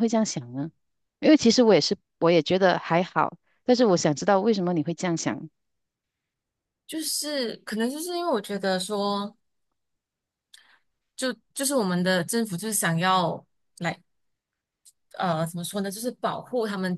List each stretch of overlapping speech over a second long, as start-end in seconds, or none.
none